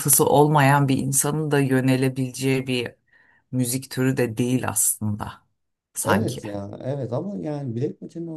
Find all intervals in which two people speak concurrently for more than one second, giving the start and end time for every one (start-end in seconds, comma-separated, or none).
none